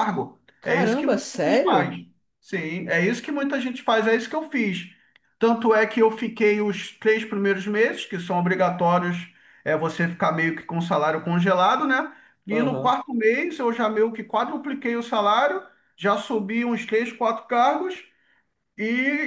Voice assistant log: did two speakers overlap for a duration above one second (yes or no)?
yes